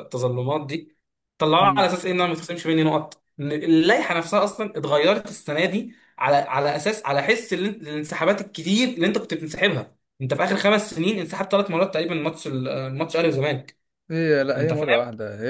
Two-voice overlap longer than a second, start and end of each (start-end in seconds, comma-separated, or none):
none